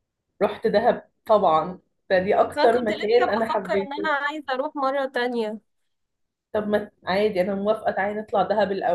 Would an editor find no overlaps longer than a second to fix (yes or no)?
no